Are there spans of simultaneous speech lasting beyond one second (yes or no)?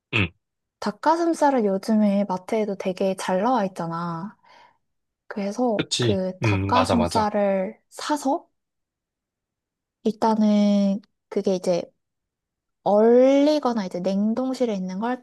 yes